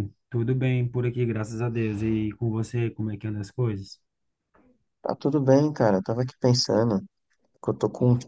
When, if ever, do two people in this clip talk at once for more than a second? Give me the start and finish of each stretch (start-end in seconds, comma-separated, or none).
none